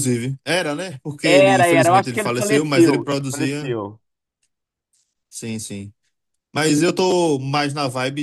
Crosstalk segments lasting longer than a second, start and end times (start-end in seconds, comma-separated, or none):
1.2-3.7